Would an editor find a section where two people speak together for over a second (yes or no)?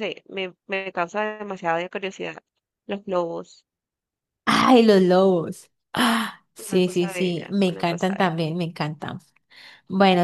yes